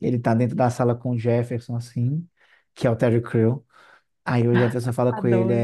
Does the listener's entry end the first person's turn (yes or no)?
no